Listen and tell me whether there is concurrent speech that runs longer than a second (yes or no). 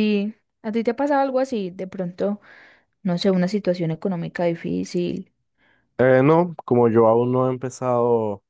no